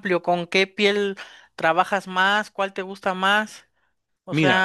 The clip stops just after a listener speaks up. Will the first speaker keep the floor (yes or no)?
no